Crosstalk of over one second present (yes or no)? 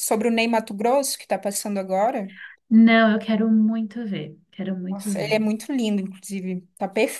no